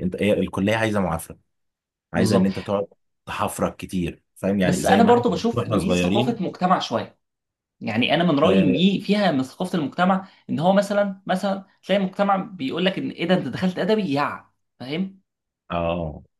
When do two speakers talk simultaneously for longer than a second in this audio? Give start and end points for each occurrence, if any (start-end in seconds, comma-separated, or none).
4.6-6.4